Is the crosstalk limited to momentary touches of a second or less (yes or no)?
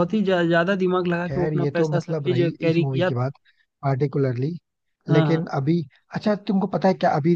no